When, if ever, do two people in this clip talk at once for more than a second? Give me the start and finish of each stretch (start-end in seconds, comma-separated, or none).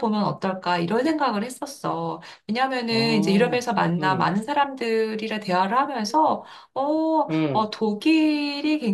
2.9-4.3